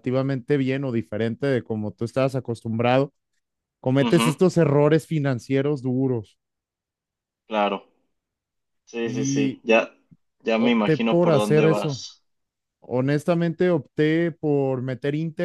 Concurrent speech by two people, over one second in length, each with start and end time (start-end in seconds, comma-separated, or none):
10.6-12.0